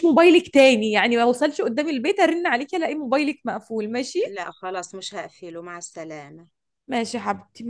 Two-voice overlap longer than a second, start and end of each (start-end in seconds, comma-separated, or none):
none